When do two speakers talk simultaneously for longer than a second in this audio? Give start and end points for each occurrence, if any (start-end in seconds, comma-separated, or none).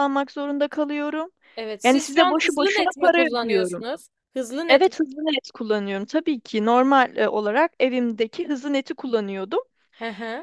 1.8-3.8